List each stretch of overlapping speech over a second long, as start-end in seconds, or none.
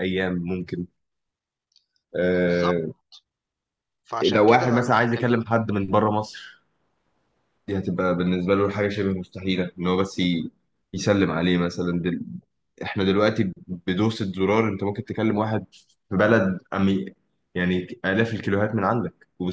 4.2-5.5